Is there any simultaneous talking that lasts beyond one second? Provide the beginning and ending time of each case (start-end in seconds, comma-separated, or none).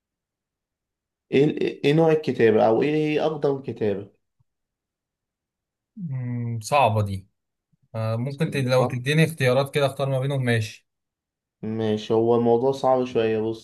none